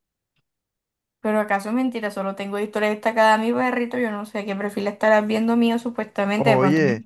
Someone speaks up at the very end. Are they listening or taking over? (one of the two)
taking over